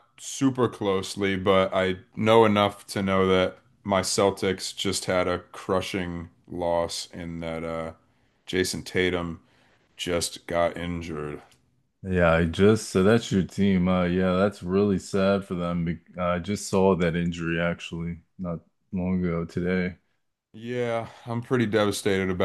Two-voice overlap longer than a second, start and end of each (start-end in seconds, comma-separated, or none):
none